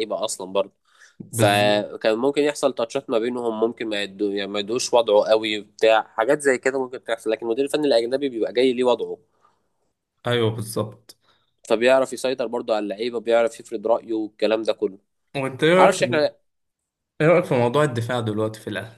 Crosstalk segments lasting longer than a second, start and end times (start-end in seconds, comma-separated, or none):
none